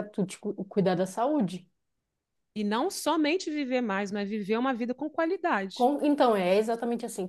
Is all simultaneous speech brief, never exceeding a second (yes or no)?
yes